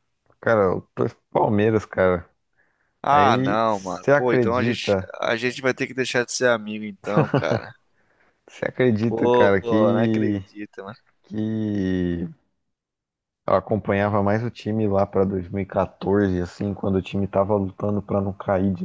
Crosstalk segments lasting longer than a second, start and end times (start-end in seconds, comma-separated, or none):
3.1-5.1, 9.0-10.4